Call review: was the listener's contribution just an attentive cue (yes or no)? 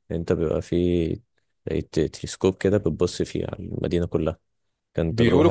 no